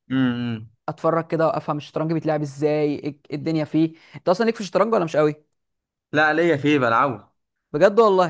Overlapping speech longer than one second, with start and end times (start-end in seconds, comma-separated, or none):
none